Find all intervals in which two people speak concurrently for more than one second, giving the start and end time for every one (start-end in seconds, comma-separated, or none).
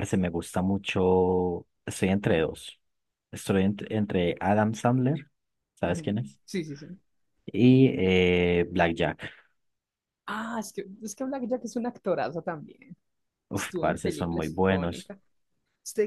13.5-15.1